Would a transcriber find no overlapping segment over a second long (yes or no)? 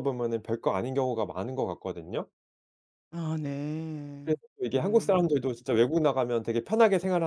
no